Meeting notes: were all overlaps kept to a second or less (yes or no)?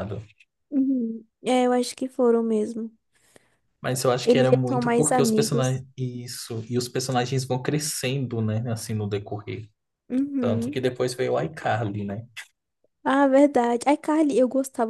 no